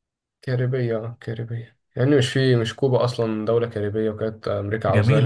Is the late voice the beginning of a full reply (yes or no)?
yes